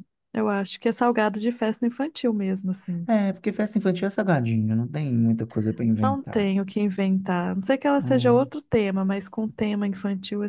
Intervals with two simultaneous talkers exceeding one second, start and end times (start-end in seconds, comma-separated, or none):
none